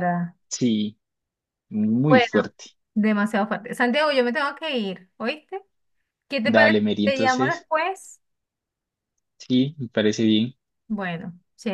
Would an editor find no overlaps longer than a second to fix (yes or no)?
no